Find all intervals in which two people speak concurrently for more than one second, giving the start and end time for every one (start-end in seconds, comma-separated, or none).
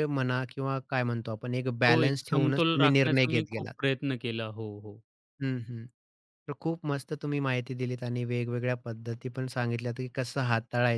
1.9-3.7